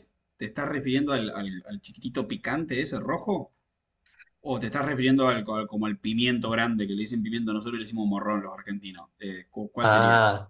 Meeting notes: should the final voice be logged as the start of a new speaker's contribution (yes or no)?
yes